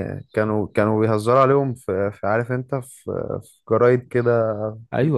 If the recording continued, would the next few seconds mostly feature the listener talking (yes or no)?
yes